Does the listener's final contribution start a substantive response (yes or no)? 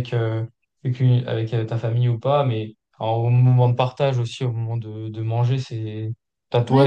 no